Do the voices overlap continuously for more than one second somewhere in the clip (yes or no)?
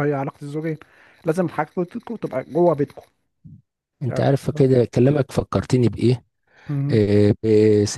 no